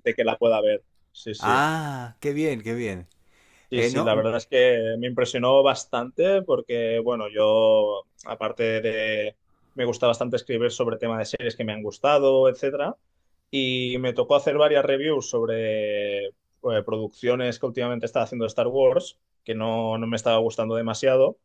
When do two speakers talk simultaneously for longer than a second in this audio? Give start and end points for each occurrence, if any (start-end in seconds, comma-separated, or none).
none